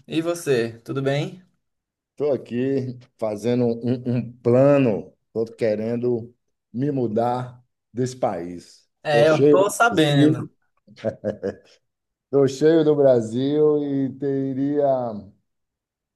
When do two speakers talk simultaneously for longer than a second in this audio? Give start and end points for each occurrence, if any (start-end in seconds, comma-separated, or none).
9.0-10.4